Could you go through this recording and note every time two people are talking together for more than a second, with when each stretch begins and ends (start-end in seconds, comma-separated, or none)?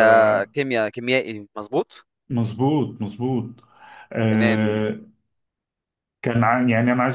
none